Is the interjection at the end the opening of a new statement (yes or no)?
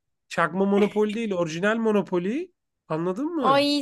yes